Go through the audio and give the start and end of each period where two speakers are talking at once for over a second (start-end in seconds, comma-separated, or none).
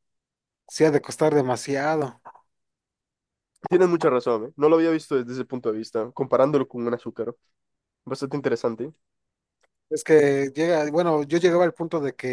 none